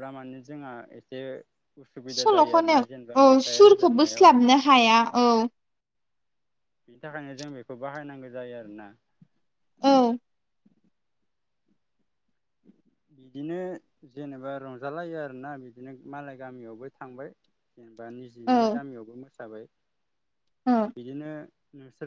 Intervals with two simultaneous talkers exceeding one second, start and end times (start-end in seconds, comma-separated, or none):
2.1-4.9